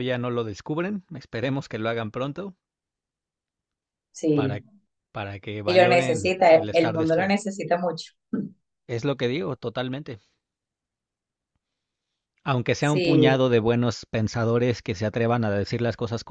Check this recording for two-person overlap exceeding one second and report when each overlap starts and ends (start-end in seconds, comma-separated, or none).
5.7-7.4